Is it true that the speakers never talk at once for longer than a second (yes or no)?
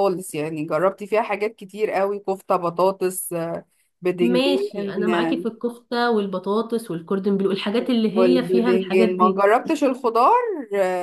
no